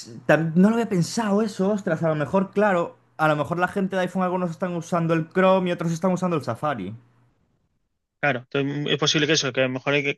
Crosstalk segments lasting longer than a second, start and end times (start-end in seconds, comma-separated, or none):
none